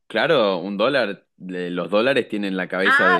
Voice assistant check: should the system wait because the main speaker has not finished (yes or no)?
no